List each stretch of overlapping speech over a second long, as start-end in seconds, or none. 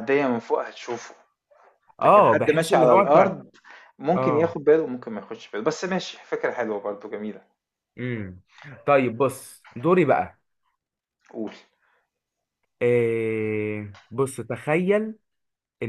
2.0-3.3